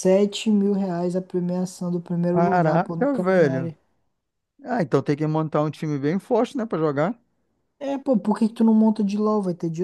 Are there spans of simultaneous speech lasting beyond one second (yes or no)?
yes